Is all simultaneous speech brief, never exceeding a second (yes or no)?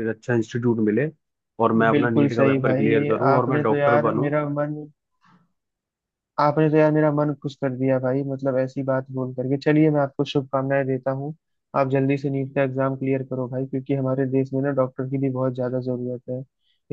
no